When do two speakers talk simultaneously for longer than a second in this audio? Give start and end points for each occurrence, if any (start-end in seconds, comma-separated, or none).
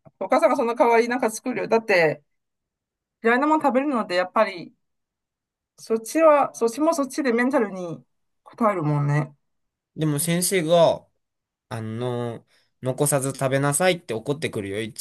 none